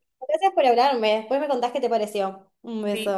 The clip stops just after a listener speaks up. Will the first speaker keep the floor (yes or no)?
no